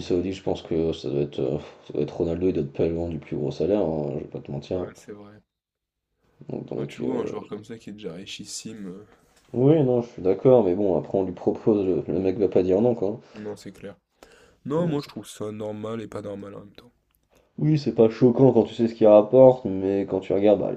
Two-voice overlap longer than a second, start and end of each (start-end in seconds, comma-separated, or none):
none